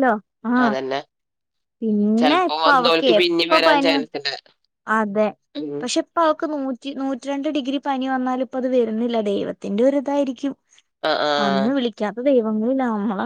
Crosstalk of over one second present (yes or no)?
yes